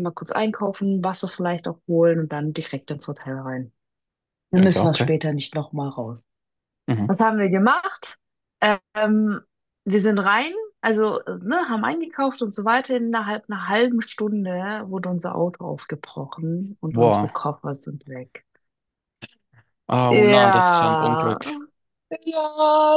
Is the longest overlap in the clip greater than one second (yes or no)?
yes